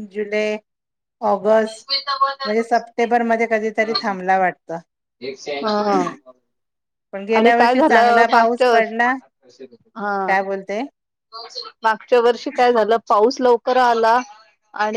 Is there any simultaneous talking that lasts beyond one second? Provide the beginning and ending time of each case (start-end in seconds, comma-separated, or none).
7.4-9.1